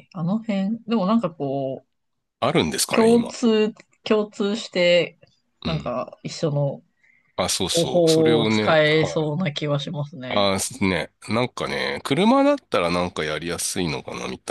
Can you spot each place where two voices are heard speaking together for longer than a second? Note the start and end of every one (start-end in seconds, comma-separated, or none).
7.7-9.1